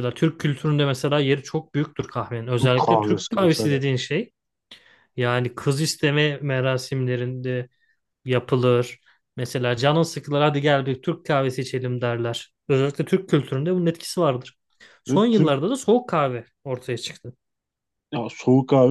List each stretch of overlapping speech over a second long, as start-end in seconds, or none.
2.6-3.8